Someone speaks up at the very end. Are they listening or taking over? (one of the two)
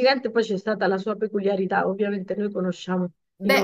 taking over